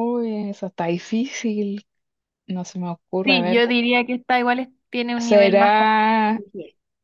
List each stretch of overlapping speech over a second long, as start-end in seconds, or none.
5.2-6.4